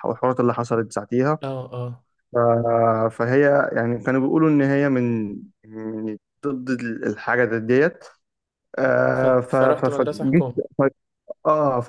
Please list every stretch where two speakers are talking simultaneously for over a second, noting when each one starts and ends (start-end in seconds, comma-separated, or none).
9.1-10.4